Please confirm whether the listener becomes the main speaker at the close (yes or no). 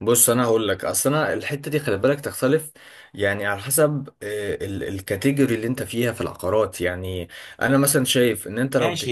yes